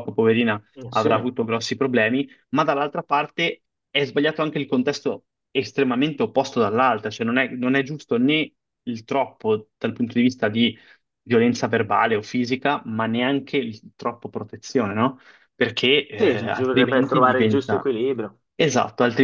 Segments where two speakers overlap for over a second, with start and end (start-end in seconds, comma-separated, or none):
16.1-17.9